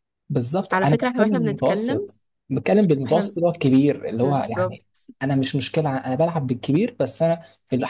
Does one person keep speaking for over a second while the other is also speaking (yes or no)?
yes